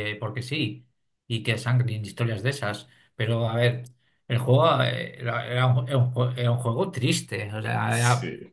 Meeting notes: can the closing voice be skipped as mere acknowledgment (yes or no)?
yes